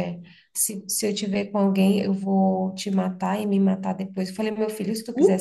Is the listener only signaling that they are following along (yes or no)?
yes